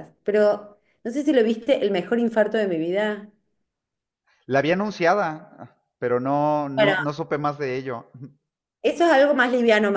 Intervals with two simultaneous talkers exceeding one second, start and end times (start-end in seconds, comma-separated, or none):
none